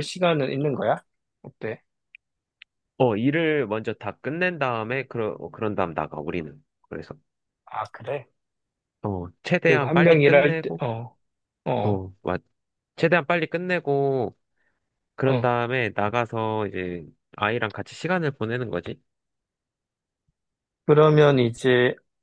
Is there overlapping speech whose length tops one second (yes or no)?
yes